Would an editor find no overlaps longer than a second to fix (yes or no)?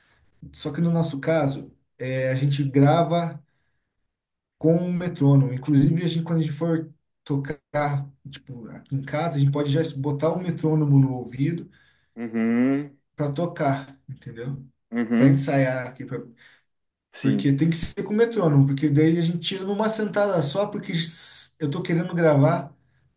yes